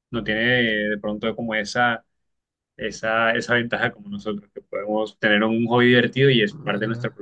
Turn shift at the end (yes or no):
yes